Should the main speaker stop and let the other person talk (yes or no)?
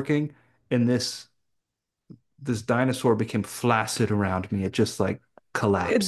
no